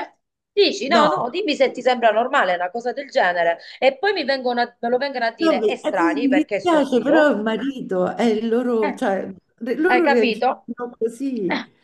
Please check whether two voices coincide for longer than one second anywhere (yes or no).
yes